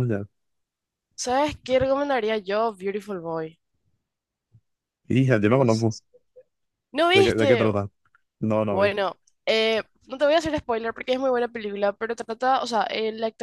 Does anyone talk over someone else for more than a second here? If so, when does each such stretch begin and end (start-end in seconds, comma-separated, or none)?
none